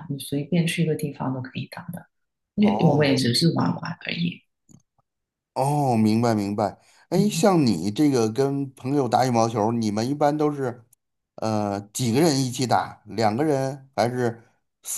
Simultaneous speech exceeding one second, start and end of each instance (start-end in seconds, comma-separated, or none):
none